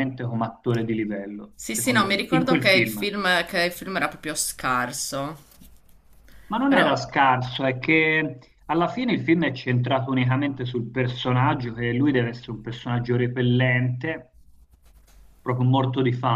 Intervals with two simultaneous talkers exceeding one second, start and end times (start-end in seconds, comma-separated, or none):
1.5-3.1